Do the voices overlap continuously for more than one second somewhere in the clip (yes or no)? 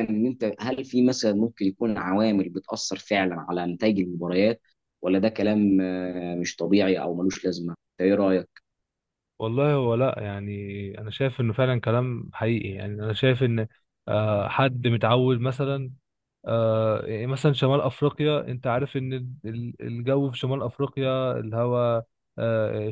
no